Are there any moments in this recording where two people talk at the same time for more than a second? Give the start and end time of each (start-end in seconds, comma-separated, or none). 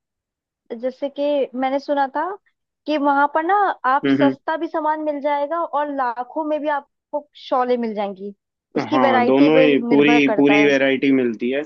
8.9-10.7